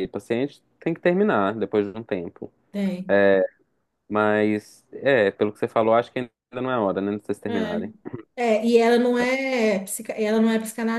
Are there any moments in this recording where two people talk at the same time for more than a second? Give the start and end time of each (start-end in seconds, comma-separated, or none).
none